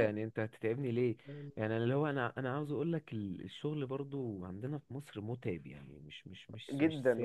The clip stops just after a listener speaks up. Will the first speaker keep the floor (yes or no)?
no